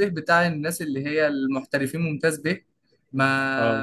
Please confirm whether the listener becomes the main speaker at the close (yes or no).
no